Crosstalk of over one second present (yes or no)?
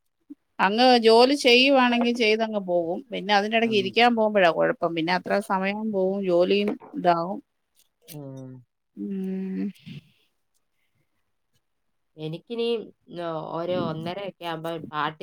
no